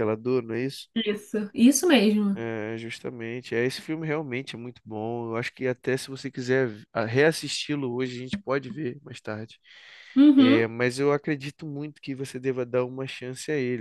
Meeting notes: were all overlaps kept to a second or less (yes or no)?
yes